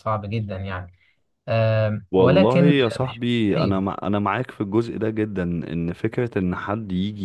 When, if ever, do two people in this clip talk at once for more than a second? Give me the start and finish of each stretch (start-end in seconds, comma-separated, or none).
2.1-3.8